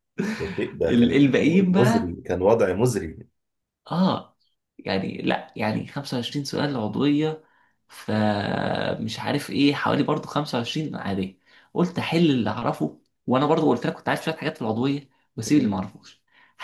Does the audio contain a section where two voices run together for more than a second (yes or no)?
yes